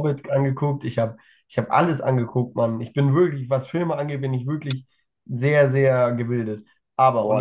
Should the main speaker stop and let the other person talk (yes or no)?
yes